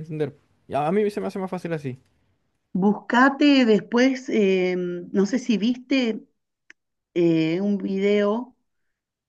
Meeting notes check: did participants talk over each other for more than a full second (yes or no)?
no